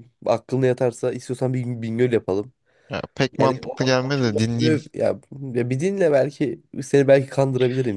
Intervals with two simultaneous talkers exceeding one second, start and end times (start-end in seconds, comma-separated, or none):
3.4-4.8